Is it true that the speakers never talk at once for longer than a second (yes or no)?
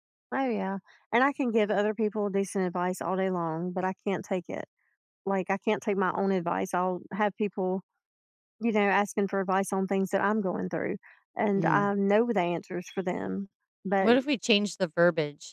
yes